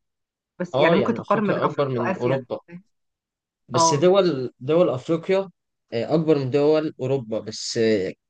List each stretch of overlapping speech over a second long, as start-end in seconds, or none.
0.7-2.4